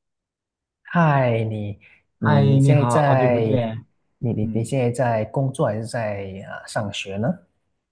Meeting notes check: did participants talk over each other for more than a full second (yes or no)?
yes